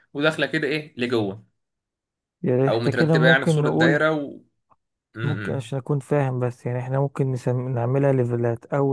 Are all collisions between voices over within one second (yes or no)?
no